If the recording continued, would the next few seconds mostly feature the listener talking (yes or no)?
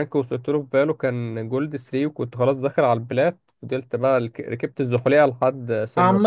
yes